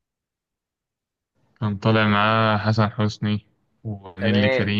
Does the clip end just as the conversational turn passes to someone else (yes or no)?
yes